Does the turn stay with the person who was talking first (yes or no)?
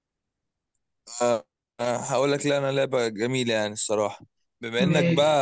yes